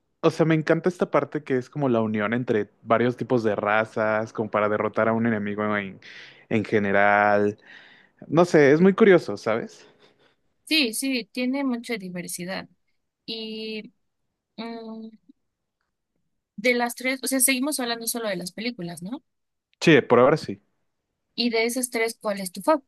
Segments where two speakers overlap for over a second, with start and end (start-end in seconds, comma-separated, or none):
none